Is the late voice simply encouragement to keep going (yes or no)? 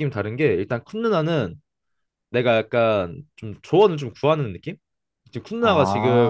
yes